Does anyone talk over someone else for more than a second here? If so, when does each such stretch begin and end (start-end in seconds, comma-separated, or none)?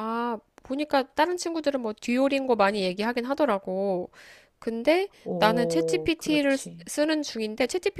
5.2-6.8